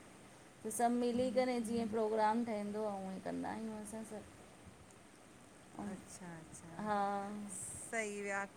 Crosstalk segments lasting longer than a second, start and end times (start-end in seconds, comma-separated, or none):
none